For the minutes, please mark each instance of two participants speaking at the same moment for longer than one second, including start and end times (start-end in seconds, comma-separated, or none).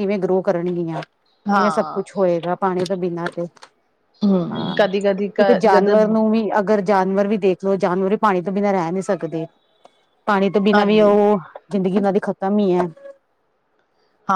none